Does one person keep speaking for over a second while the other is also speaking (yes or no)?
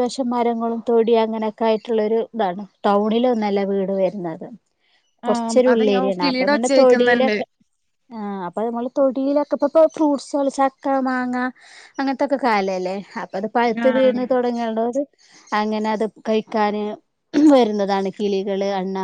yes